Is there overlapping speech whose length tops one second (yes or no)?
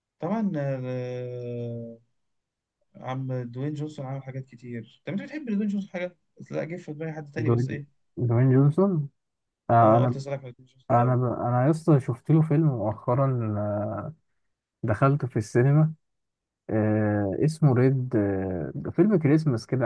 no